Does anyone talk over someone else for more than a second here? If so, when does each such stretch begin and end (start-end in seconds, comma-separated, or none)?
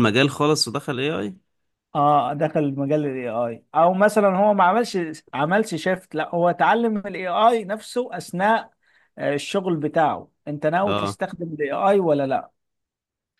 none